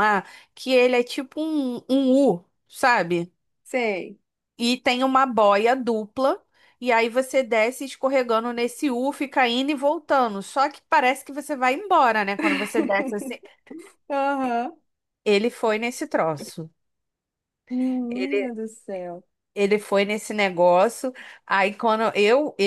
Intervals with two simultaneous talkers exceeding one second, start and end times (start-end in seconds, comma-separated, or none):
none